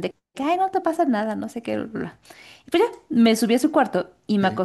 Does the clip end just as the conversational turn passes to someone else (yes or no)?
no